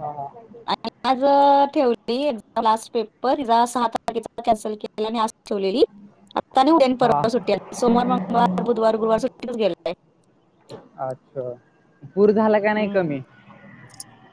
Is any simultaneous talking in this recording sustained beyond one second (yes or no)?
no